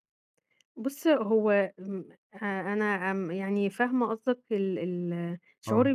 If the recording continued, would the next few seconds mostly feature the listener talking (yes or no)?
no